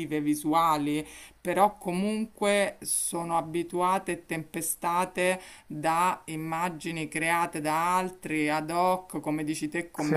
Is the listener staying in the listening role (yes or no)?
yes